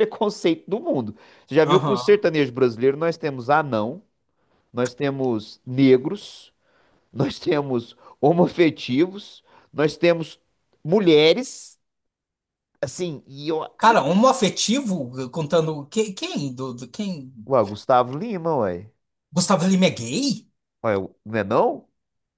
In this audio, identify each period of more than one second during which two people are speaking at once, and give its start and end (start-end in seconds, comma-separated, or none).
none